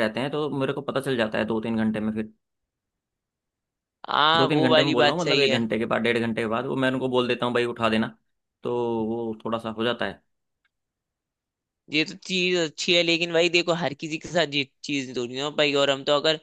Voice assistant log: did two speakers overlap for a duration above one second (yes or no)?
yes